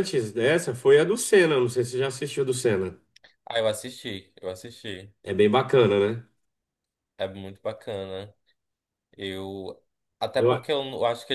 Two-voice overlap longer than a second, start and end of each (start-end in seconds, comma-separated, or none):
none